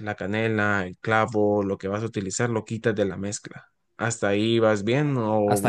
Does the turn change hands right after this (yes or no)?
yes